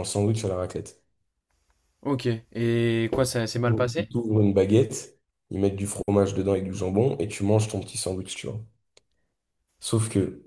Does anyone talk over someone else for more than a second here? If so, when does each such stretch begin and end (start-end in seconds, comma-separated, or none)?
none